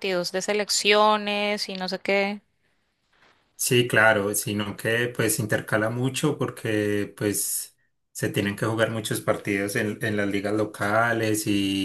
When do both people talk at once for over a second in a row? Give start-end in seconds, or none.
none